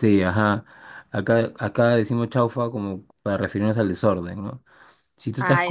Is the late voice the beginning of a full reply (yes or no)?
no